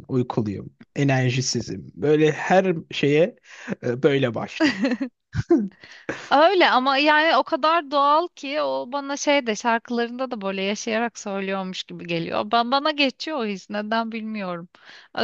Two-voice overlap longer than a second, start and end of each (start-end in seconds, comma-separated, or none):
none